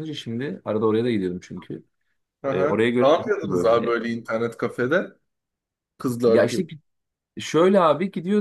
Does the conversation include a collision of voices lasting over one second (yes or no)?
yes